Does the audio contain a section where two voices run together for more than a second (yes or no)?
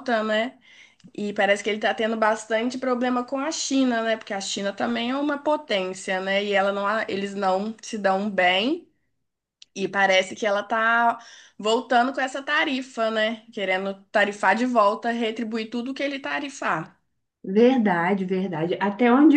no